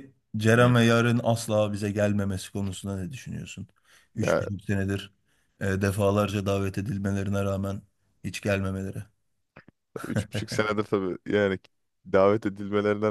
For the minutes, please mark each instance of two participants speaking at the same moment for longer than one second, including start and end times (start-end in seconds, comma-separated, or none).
none